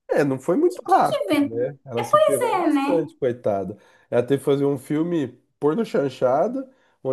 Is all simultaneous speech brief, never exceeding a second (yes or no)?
no